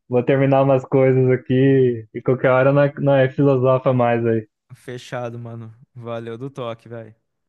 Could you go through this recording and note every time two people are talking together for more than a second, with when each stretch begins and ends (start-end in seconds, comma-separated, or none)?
none